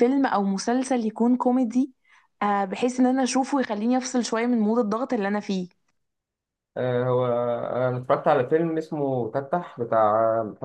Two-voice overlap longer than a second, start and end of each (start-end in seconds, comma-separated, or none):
none